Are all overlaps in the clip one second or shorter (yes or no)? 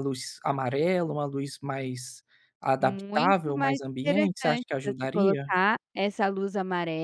no